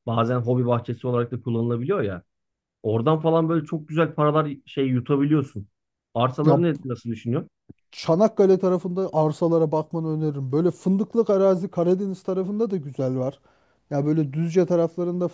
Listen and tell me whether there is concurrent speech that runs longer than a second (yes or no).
no